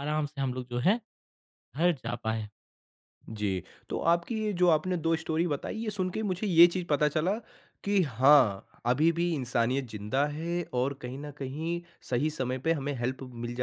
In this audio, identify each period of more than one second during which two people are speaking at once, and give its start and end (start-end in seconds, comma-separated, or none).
none